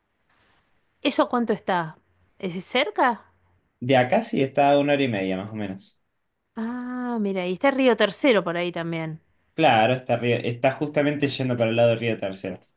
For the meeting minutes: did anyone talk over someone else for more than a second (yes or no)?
no